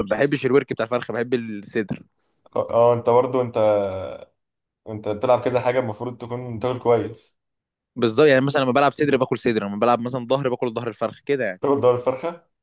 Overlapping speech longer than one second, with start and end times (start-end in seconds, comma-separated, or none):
none